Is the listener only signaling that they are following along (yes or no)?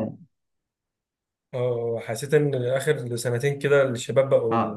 yes